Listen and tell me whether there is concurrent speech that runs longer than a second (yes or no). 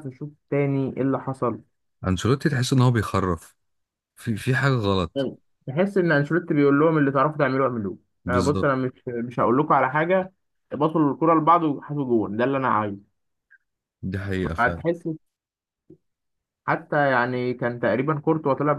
no